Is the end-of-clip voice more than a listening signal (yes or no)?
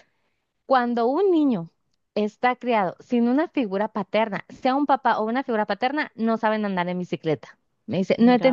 no